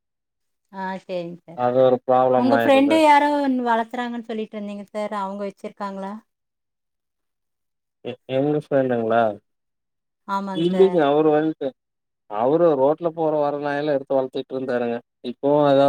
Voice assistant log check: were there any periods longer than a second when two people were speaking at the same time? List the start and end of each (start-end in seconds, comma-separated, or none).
none